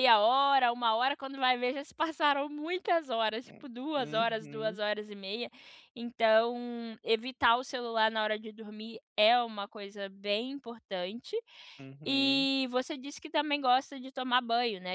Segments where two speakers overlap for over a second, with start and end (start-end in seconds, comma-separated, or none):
3.5-4.8